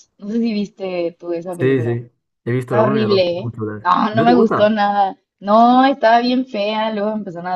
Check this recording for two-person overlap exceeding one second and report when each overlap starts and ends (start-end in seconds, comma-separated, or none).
2.6-4.8